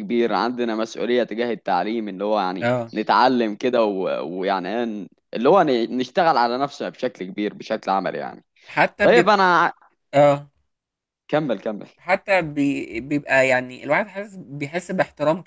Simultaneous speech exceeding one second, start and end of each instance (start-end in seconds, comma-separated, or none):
none